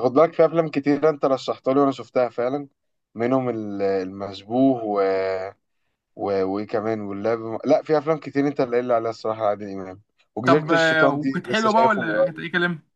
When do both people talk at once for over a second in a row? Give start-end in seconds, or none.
10.4-12.4